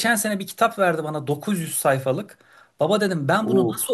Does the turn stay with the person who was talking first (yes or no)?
yes